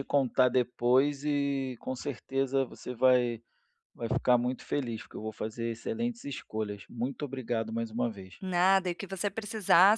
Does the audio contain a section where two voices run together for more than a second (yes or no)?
no